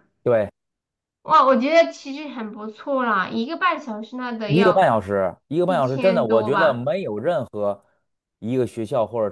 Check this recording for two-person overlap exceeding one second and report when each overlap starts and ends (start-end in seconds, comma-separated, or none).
5.6-6.9